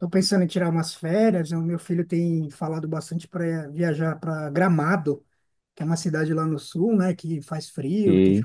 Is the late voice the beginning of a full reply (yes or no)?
no